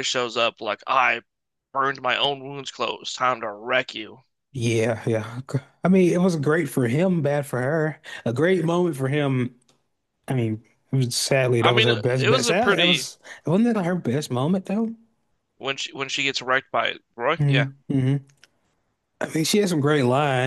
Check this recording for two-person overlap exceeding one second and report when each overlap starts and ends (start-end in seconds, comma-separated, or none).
11.6-13.1